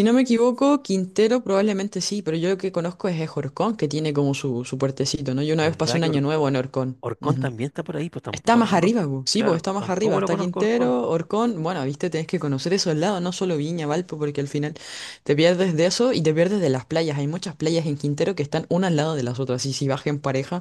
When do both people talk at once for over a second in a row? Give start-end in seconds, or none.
8.3-11.0